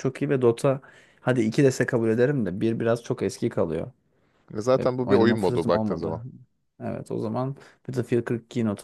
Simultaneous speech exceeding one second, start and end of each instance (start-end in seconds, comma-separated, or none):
4.8-6.2